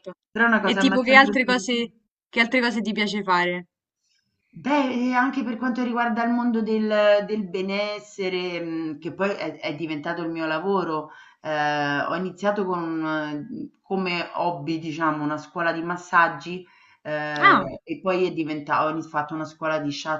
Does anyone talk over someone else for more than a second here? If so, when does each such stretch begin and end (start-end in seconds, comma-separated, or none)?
0.6-1.9